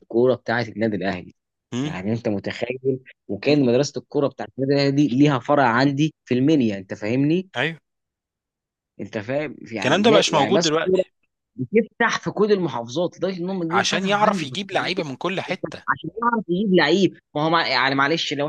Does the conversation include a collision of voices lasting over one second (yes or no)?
yes